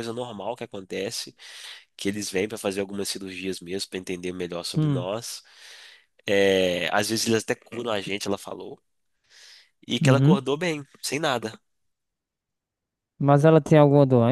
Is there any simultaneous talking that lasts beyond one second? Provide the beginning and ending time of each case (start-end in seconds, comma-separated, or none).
none